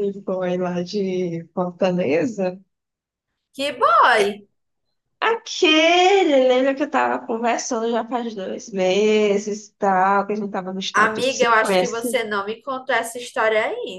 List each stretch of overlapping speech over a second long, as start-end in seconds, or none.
10.9-12.2